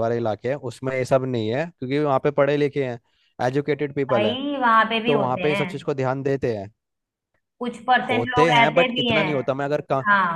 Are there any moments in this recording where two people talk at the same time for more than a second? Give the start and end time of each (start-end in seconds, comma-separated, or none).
8.1-9.5